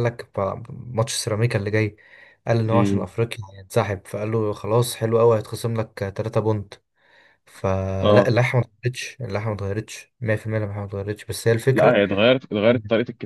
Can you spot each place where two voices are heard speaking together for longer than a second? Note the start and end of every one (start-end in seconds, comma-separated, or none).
none